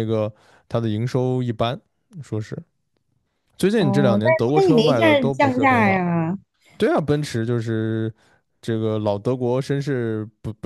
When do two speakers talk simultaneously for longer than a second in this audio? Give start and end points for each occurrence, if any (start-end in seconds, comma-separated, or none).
3.7-6.1